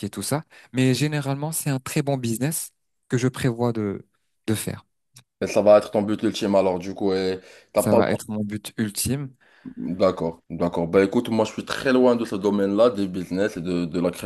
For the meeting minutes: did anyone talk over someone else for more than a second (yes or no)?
no